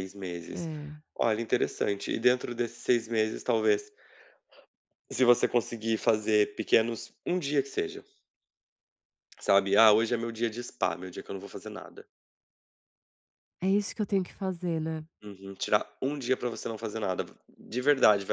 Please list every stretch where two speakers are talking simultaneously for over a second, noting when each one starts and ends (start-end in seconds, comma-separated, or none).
none